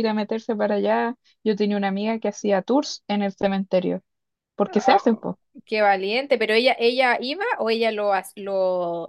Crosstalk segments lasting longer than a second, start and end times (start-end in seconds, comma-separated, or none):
none